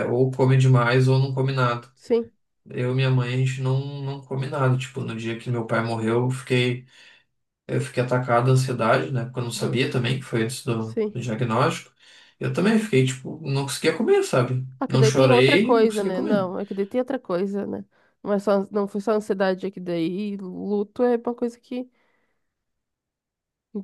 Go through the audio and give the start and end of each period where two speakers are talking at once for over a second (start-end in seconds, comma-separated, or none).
14.8-16.4